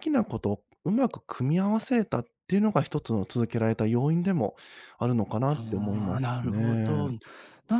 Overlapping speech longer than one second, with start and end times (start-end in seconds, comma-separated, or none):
5.5-7.0